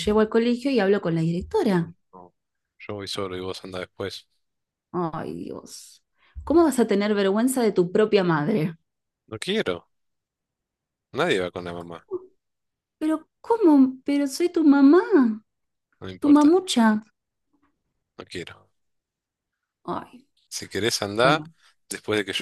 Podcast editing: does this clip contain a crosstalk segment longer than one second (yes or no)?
no